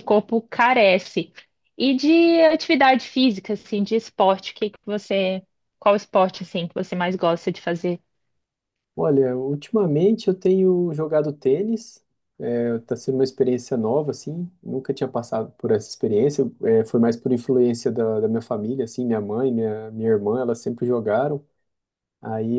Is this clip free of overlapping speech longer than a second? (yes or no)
yes